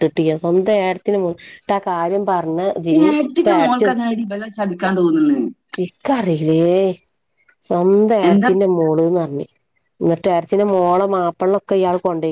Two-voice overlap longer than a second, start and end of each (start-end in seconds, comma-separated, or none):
none